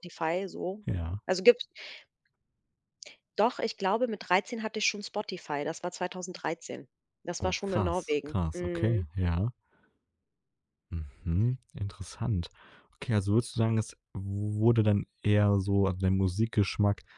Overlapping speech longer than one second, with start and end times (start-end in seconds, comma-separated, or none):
7.4-9.1